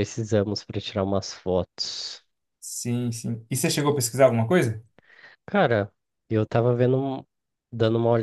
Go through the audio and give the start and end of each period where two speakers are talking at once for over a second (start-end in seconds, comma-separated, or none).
none